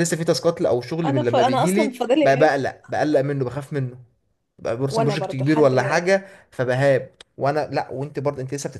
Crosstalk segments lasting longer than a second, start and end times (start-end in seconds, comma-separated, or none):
1.1-2.6, 4.8-6.2